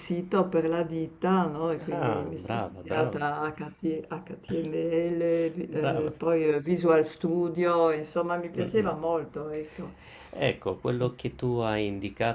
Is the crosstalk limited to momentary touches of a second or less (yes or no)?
no